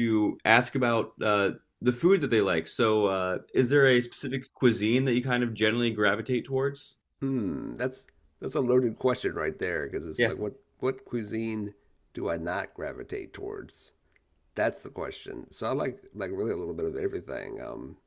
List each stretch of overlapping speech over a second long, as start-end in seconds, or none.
none